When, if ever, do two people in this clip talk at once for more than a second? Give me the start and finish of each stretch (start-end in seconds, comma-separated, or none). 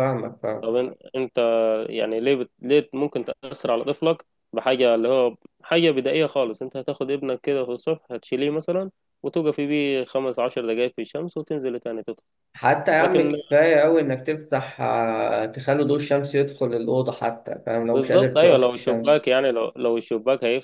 17.9-19.3